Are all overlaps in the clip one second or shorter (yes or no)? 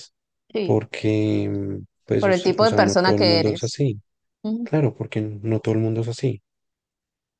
no